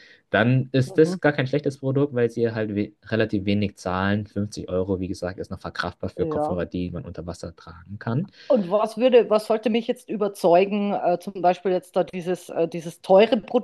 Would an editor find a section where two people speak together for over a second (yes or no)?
no